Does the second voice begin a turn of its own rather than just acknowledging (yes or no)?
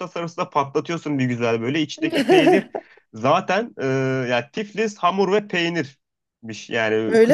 no